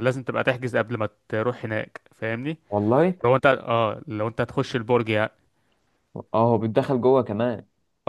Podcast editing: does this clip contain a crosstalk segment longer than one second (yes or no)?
no